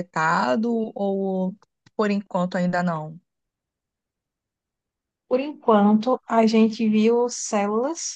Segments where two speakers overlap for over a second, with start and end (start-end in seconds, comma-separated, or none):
none